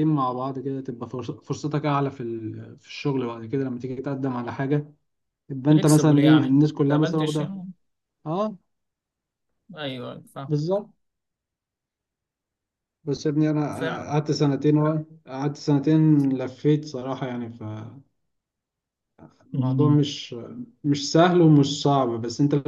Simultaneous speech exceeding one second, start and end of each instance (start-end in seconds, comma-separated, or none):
5.7-7.5